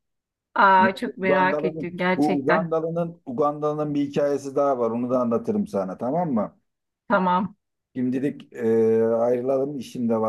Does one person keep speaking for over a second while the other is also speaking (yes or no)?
yes